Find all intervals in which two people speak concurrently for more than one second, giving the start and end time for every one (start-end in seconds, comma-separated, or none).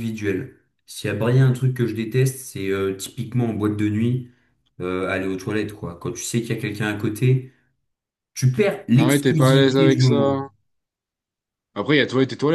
8.9-10.4